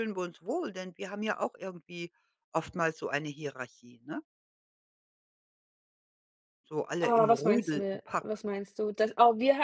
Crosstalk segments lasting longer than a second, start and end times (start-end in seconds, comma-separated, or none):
7.0-8.4